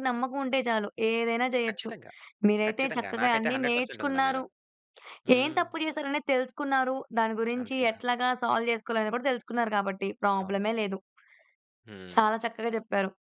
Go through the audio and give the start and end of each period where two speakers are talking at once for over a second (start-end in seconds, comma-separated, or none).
2.7-4.4